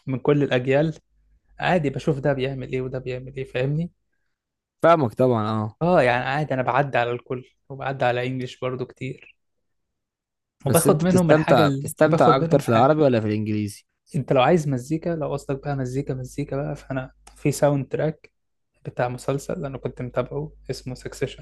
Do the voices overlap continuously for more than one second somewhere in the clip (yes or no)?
yes